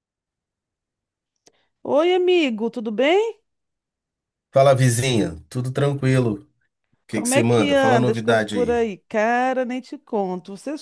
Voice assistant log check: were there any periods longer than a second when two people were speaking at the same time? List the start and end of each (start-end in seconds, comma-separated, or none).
7.1-8.8